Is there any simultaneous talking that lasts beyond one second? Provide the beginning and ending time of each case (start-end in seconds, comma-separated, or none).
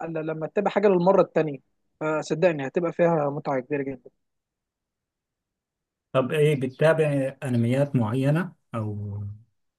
none